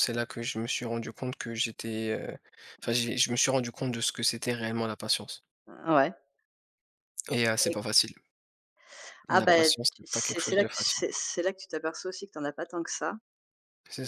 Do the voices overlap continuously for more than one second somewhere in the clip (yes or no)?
yes